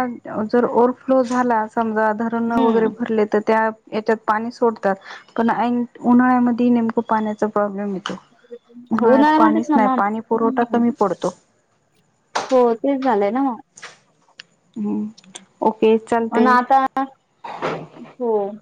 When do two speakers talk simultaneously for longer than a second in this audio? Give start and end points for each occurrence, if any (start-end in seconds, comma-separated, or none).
9.0-10.8